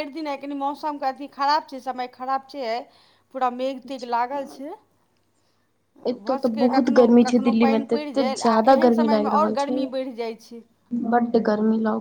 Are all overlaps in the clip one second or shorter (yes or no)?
no